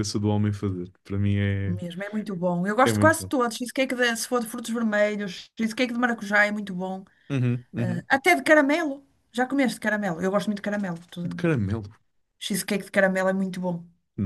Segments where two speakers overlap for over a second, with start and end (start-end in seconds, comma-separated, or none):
none